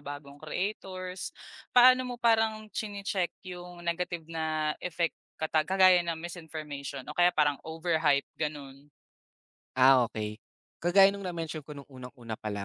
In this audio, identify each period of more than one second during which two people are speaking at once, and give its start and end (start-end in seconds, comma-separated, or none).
none